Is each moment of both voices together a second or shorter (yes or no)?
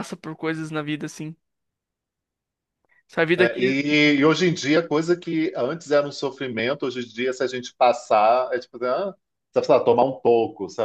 yes